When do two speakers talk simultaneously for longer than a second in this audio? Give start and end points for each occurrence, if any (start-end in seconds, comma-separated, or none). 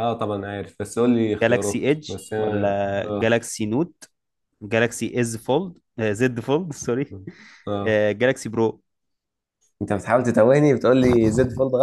1.4-3.3